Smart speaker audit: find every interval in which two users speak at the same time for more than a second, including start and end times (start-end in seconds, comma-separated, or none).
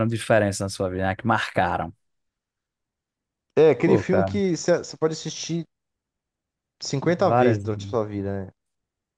none